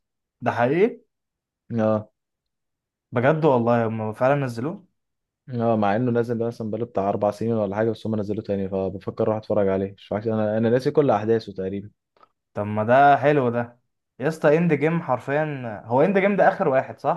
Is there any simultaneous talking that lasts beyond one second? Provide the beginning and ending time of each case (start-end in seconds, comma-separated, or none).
none